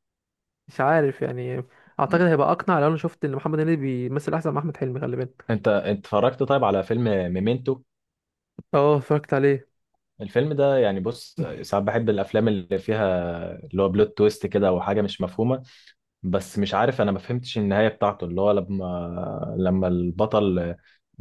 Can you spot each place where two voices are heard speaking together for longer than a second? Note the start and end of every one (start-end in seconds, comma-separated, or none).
none